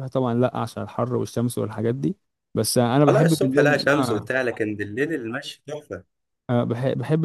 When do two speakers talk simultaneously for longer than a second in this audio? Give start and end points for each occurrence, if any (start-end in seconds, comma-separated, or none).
3.1-4.3